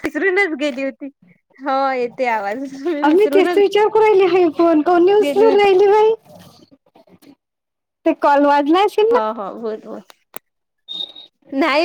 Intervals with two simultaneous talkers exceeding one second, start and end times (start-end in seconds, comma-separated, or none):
none